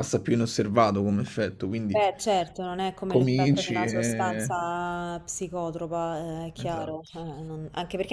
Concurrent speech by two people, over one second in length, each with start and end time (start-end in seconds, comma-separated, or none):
3.1-4.5